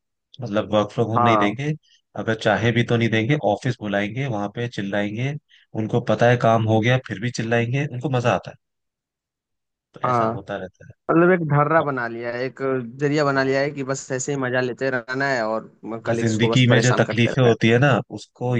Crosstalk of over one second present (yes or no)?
yes